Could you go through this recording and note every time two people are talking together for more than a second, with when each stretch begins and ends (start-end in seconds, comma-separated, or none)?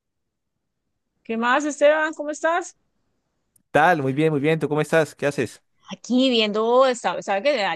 none